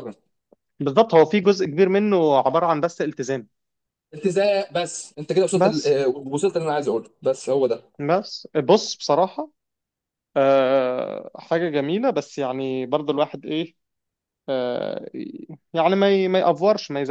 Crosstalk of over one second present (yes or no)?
no